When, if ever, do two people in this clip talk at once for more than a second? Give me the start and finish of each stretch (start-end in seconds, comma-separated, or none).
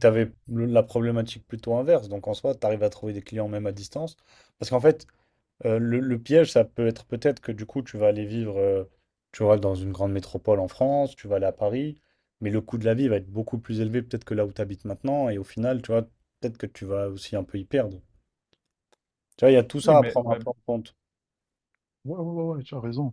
none